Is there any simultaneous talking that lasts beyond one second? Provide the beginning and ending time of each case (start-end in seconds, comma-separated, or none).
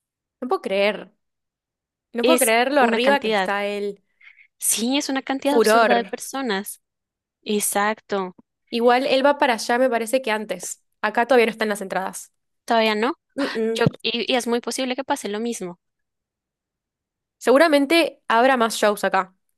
2.2-3.5